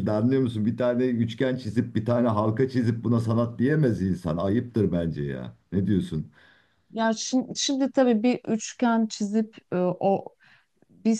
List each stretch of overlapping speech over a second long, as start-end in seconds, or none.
none